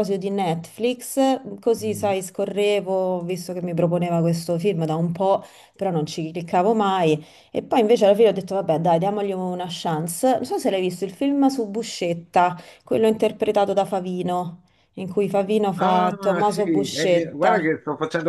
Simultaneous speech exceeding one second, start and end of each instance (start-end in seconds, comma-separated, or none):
15.8-17.7